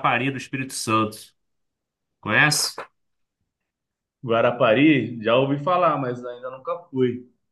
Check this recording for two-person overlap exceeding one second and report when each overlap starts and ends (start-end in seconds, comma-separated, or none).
none